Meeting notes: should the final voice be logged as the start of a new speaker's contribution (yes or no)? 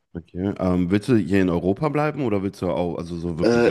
yes